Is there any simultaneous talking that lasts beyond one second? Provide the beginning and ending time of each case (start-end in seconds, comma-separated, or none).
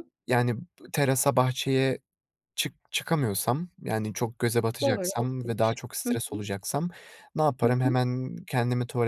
4.8-6.4